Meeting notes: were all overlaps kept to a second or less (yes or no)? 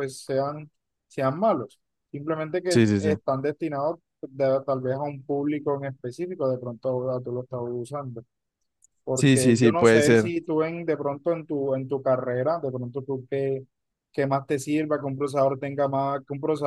no